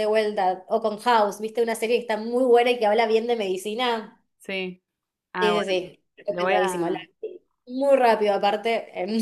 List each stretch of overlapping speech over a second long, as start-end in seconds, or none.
5.4-7.0